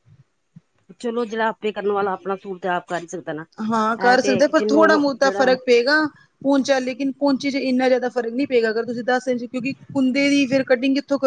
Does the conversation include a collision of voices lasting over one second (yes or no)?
yes